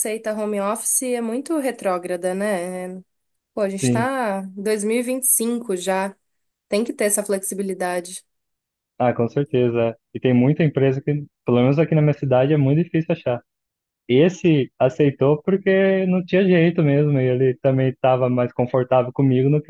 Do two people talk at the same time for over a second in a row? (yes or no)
no